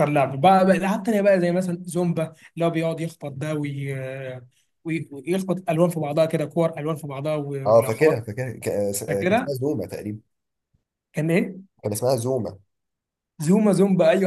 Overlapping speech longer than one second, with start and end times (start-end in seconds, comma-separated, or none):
none